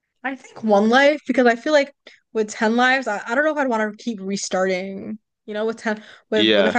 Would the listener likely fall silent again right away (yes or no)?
yes